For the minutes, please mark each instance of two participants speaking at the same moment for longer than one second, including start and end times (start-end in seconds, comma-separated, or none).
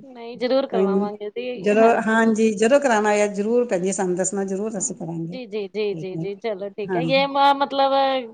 none